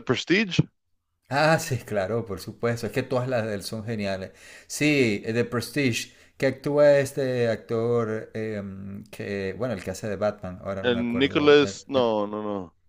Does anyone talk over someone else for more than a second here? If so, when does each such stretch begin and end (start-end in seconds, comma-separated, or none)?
10.8-12.2